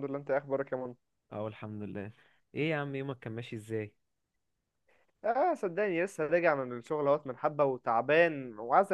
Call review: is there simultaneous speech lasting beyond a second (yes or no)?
no